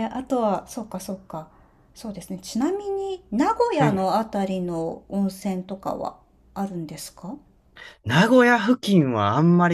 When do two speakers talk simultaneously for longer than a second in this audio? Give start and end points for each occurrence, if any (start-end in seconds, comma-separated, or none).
none